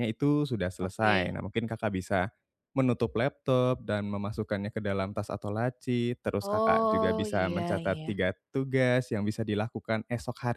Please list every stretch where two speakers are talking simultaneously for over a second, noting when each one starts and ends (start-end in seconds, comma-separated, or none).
6.4-8.1